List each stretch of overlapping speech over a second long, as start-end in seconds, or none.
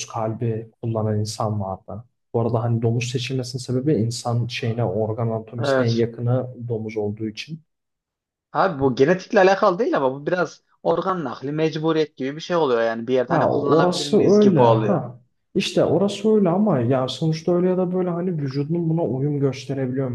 13.3-15.0